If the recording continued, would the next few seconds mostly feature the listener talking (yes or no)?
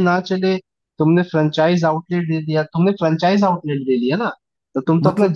no